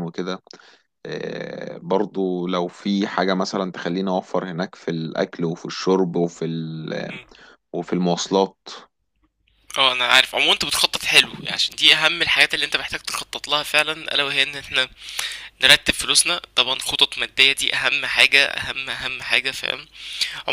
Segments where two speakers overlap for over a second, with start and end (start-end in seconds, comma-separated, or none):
none